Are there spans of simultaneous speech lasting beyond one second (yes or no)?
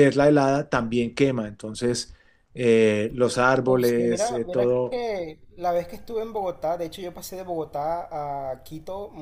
yes